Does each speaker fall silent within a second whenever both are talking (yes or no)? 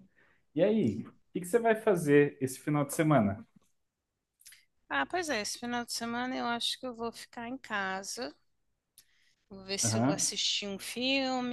yes